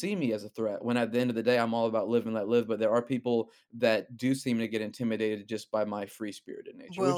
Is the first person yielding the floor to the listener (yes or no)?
yes